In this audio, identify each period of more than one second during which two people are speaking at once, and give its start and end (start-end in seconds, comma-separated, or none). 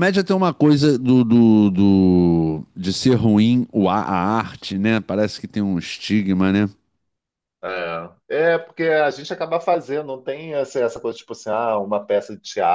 none